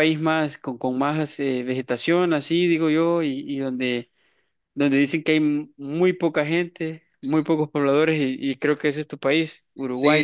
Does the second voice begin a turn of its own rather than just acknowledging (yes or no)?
yes